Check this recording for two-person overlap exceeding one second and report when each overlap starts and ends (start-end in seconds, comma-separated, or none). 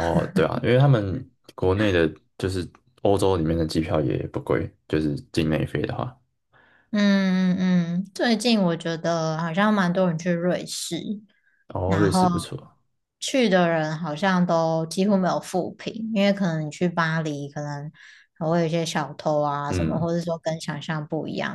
none